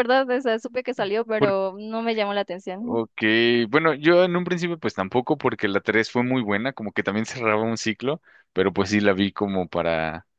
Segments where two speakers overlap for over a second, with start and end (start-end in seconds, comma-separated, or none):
none